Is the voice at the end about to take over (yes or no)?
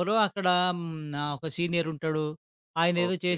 no